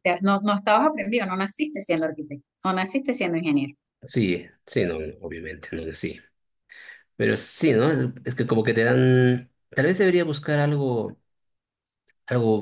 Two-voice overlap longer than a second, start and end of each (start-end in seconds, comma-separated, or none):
none